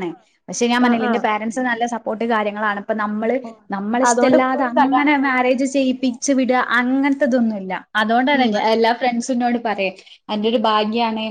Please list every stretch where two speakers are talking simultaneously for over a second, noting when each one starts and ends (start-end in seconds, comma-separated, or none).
4.1-6.1